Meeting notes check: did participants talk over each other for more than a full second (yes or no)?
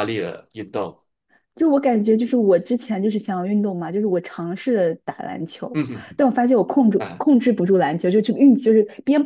no